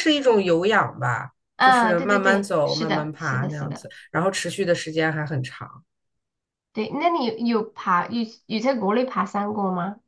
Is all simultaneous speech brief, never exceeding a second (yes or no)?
no